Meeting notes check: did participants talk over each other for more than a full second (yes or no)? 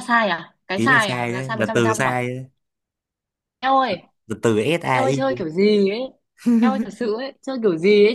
yes